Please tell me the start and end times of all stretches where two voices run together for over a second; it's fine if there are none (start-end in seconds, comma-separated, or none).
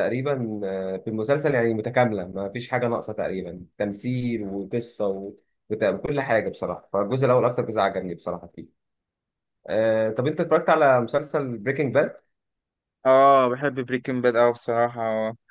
none